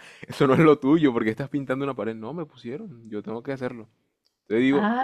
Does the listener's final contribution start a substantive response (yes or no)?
yes